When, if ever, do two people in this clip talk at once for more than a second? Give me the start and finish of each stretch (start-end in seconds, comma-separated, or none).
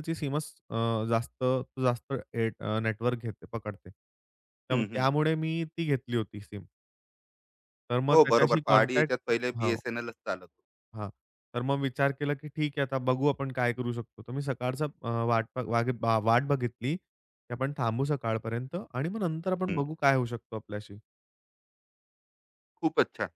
8.1-9.8